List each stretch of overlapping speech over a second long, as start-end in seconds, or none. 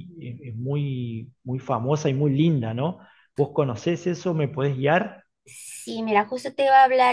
none